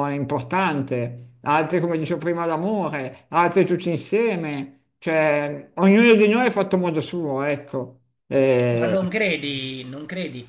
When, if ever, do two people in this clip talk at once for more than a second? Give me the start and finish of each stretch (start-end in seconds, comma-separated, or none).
none